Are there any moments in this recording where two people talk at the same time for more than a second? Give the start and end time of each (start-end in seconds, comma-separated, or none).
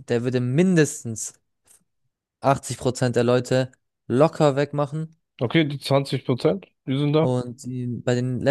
none